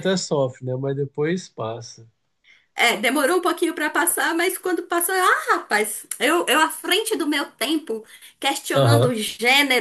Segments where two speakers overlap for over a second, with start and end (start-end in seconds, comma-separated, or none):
none